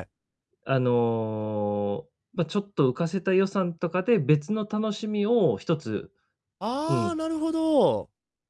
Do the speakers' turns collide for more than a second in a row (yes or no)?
no